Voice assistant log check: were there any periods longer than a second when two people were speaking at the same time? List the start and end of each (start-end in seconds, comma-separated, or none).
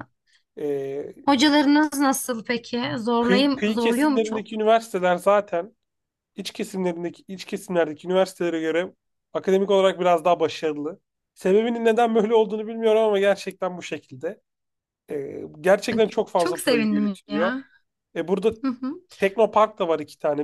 3.2-4.6, 15.9-17.6